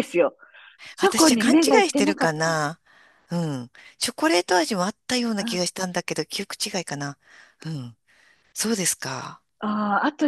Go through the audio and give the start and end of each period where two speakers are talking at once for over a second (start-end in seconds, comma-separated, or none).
1.0-2.6